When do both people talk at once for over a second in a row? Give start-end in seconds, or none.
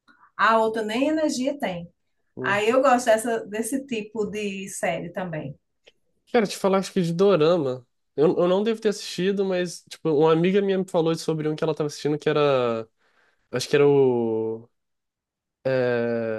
none